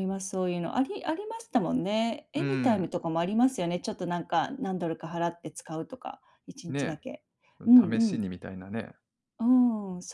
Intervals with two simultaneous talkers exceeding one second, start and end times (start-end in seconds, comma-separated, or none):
none